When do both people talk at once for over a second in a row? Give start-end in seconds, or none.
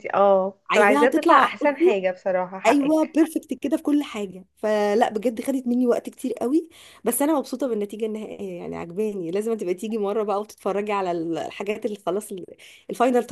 0.7-1.9